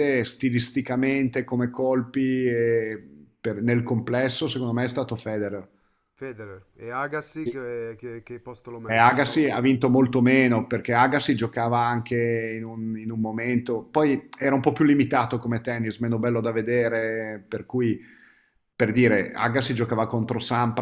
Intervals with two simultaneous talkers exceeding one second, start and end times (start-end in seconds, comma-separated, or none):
none